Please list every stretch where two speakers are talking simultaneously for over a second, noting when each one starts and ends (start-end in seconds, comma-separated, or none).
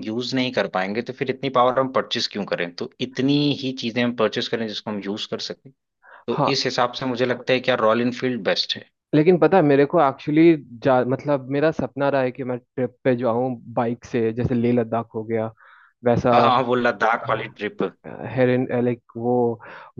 none